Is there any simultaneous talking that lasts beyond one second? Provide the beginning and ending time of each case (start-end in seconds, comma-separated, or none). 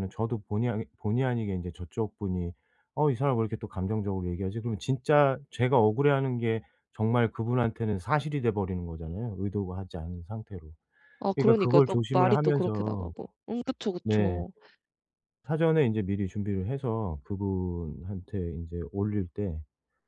11.3-13.1